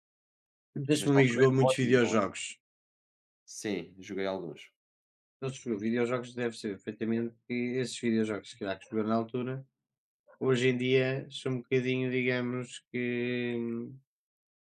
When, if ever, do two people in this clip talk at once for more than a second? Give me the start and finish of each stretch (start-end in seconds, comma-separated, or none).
1.0-2.3